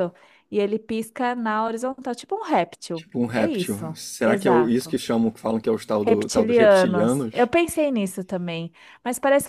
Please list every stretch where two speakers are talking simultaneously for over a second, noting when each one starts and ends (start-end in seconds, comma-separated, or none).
2.9-5.0, 6.1-7.5